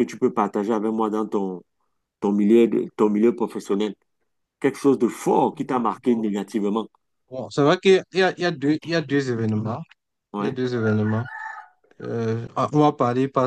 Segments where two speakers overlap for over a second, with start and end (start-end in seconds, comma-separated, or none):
none